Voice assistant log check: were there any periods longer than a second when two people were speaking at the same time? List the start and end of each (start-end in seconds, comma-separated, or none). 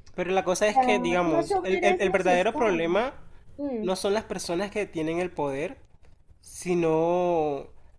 0.7-2.9